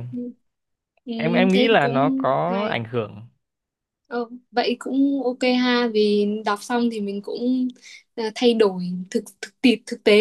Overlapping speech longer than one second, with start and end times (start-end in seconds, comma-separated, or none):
1.2-2.8